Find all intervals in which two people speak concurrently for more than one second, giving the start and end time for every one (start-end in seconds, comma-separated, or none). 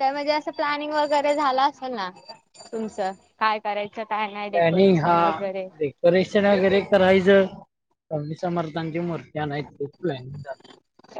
none